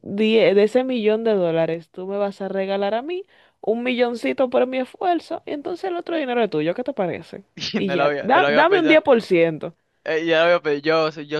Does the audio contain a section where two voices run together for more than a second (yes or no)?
yes